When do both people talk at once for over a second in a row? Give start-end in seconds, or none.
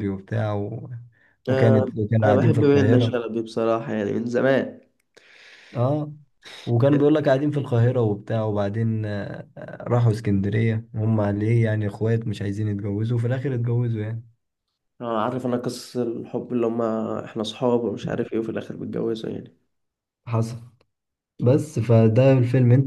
1.5-3.2